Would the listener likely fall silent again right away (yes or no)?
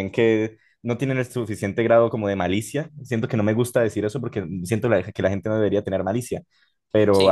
yes